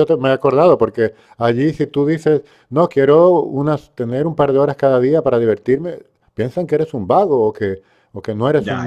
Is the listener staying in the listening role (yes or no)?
yes